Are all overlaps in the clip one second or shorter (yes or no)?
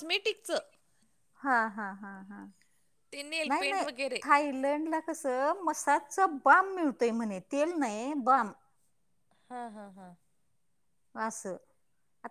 yes